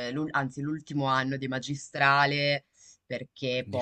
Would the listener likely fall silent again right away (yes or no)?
yes